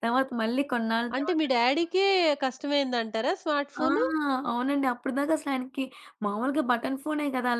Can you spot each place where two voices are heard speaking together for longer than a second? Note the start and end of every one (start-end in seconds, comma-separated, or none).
none